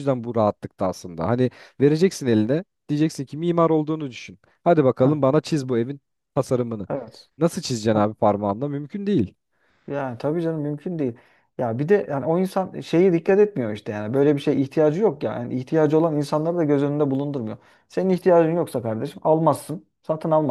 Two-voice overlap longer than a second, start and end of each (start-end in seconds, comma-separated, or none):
none